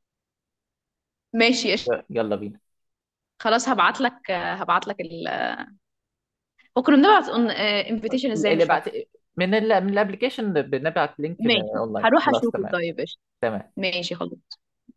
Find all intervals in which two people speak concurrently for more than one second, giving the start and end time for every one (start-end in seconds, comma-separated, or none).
11.4-12.8